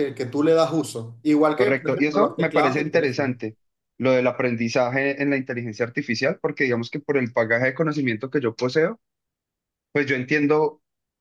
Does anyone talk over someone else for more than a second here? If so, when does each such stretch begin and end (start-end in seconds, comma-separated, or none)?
1.6-3.3